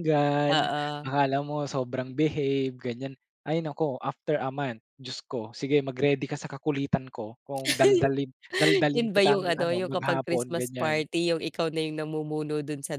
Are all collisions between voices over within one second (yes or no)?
no